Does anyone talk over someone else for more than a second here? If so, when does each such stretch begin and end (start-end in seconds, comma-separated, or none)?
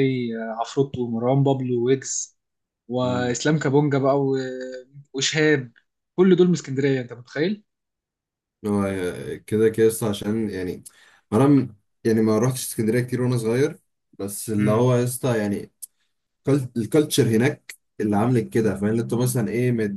none